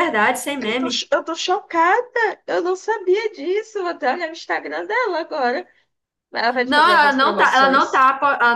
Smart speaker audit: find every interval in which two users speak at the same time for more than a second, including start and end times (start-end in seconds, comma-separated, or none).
6.7-8.1